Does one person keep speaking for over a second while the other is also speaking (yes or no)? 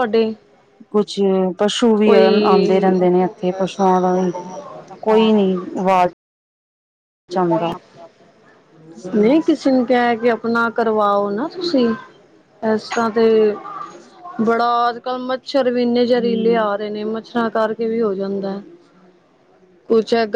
no